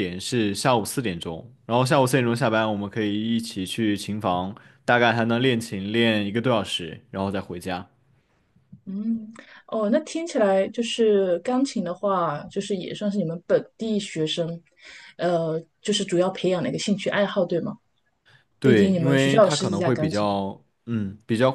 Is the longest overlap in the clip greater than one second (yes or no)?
yes